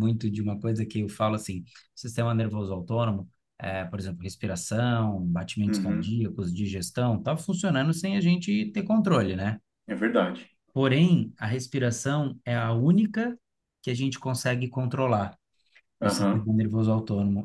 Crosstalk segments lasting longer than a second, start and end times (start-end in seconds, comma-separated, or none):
none